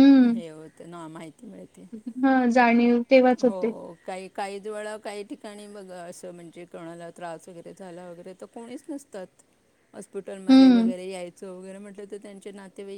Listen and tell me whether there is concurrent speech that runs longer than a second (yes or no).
no